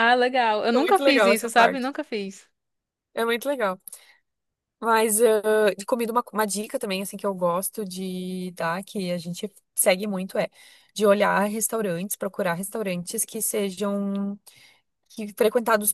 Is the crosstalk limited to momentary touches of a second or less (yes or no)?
no